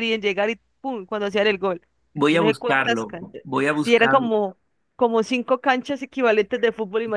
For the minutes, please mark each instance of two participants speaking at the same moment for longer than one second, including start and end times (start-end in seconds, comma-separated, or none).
2.3-4.3